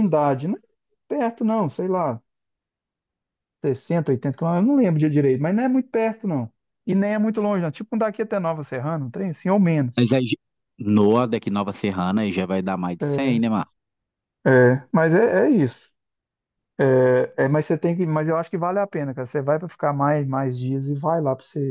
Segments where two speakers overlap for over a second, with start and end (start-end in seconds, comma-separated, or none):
none